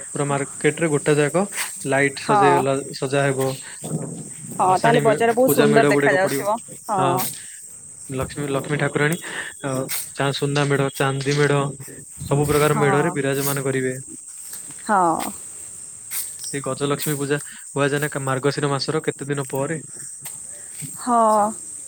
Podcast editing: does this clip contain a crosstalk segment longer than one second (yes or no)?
yes